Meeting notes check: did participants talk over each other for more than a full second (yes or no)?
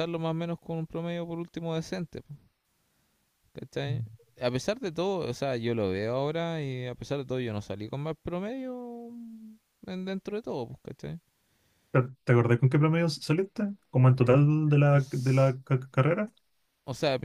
no